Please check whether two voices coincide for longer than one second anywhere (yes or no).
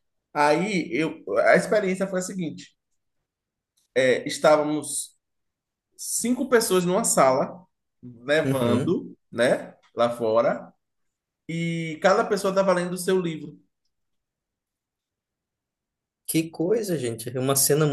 no